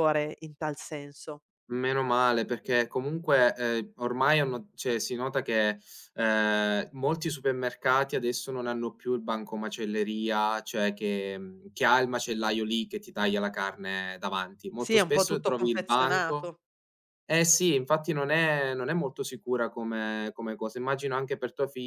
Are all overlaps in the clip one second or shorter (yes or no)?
no